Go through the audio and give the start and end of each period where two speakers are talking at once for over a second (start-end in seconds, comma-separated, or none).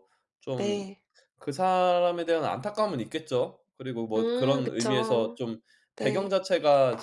4.2-5.4